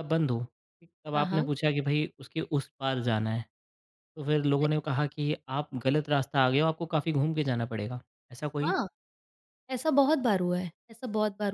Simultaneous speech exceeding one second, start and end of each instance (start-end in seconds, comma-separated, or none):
none